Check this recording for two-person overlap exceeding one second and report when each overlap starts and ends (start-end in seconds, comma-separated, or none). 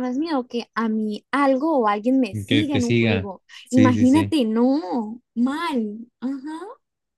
2.5-4.3